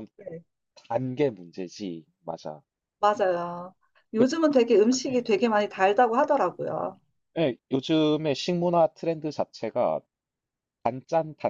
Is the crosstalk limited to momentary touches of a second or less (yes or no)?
yes